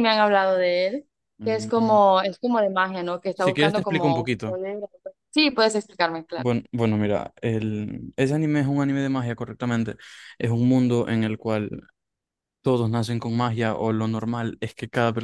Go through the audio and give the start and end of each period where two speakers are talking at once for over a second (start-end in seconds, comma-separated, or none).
3.3-4.6